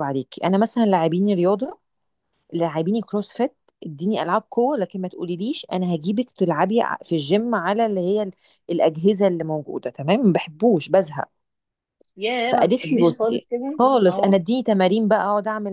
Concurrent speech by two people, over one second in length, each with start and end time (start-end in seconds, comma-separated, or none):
12.5-14.3